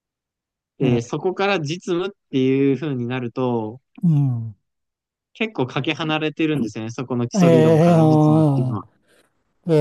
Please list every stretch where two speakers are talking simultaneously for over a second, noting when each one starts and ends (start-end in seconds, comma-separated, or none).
7.3-8.8